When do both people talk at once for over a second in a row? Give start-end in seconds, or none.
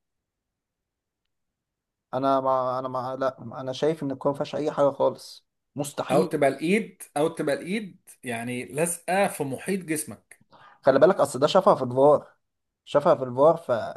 none